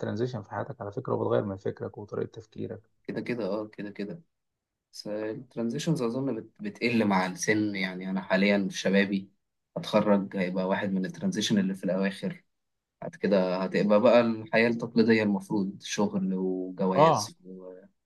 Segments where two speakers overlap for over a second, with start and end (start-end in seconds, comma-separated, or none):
none